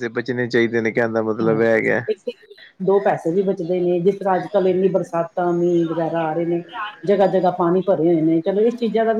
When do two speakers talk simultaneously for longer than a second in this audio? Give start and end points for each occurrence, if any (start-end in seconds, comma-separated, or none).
none